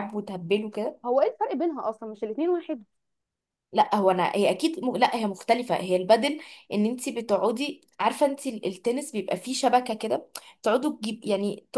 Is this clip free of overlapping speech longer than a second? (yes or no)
yes